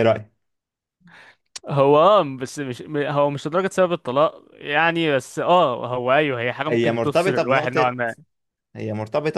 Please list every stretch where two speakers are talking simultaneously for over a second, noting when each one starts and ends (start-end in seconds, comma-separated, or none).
6.7-8.0